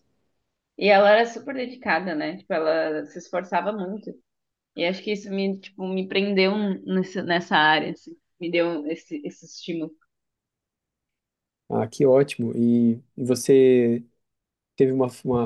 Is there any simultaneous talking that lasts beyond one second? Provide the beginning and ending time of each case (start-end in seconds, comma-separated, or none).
none